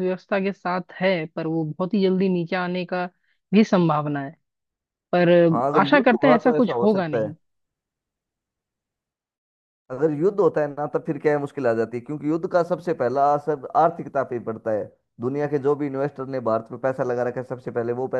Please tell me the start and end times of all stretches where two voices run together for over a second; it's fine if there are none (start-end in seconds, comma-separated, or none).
5.5-7.3